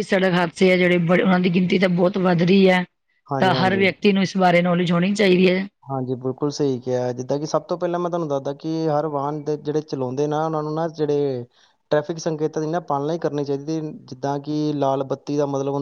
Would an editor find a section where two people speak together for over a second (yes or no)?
no